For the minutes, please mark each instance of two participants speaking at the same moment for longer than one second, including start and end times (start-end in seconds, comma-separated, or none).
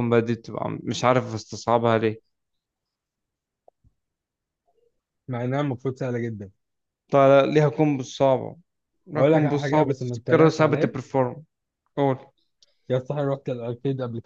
9.2-10.9